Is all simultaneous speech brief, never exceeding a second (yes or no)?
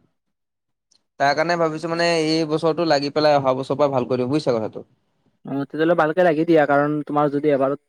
yes